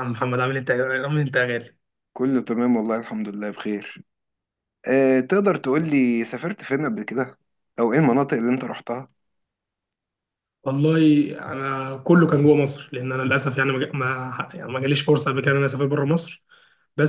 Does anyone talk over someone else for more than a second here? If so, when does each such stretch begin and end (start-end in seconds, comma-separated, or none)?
none